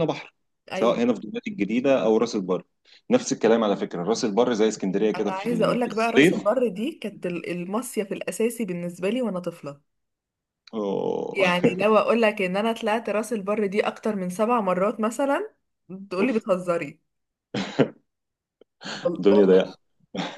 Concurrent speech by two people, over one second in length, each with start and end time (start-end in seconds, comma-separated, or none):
5.2-6.6